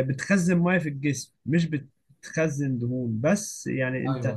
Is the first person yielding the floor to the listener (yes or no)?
no